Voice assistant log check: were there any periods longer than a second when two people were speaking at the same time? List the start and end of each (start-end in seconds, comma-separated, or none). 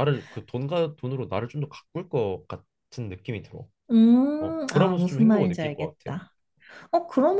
4.4-6.2